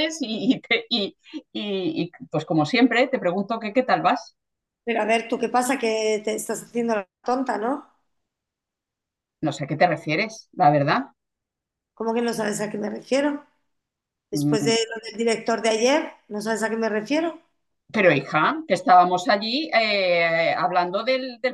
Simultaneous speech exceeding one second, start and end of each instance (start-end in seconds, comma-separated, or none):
none